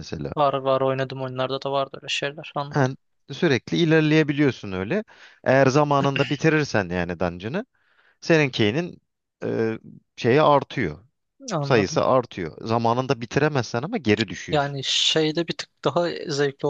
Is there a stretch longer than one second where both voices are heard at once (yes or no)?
no